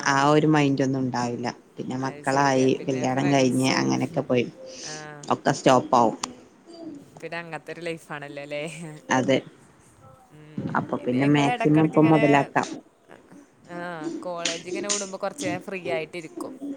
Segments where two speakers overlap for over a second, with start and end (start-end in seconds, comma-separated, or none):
2.1-3.9